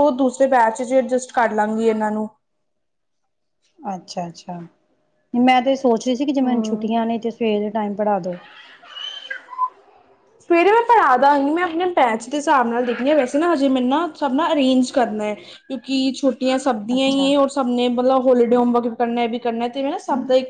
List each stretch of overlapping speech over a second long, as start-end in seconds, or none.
none